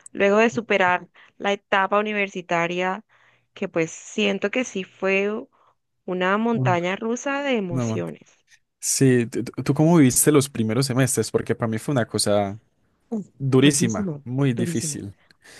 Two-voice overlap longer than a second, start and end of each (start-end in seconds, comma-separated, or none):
13.4-15.0